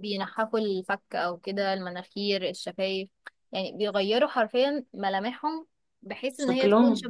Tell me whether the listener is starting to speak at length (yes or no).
no